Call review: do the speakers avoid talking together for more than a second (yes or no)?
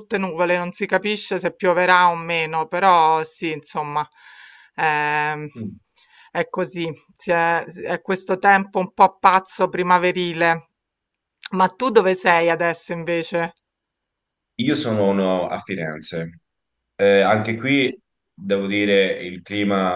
yes